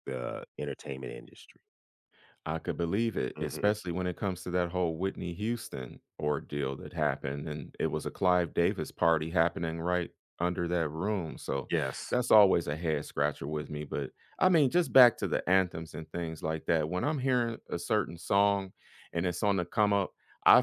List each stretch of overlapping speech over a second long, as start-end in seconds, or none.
none